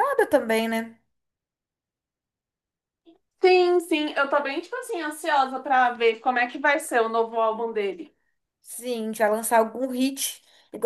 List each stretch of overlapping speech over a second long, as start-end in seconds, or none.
none